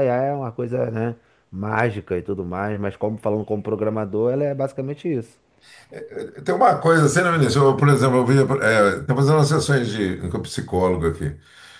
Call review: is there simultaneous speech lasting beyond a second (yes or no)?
no